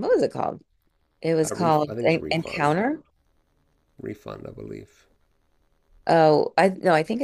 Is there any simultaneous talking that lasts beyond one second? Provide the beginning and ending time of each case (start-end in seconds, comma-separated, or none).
1.4-2.8